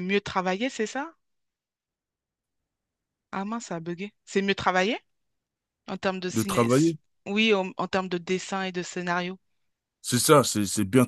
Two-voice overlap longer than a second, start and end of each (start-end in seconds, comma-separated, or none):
none